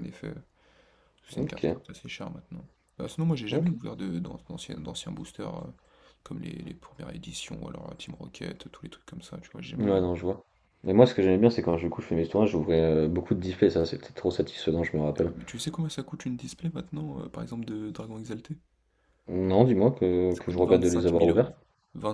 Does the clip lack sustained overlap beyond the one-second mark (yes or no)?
no